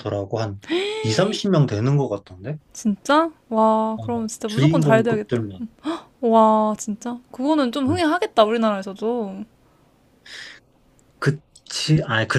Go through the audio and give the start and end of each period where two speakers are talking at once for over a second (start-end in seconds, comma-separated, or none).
4.0-5.4